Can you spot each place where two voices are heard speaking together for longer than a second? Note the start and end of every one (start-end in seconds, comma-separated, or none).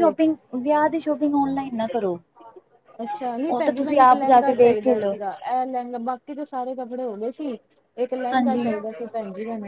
3.5-5.2